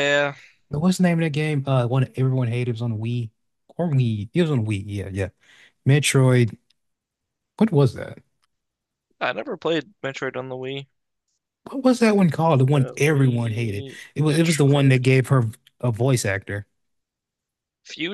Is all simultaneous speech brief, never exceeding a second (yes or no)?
no